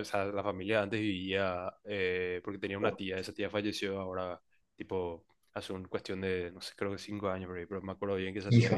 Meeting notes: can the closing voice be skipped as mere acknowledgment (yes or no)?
yes